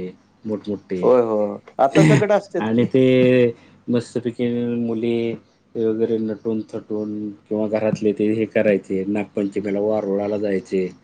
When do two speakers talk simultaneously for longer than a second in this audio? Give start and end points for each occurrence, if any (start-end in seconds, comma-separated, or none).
none